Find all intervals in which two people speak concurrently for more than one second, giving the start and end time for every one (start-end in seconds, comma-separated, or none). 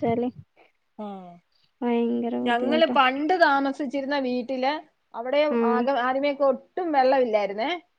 none